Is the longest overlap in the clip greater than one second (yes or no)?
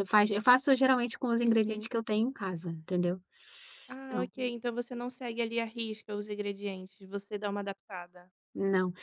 no